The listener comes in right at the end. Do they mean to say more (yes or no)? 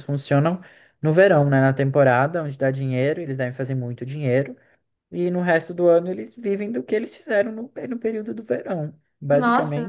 yes